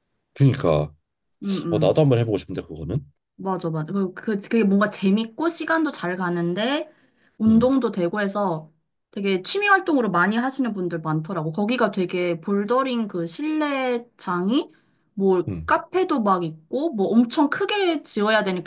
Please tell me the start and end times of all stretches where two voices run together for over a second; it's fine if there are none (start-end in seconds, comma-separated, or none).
none